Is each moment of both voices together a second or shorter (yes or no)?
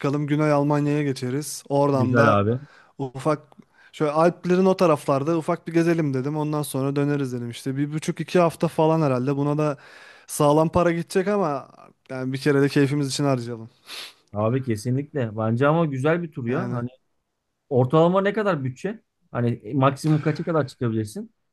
yes